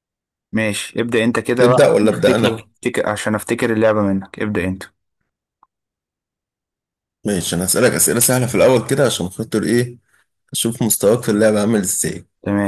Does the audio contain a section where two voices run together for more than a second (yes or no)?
no